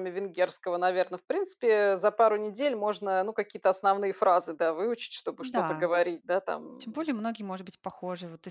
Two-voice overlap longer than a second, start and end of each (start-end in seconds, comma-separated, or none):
none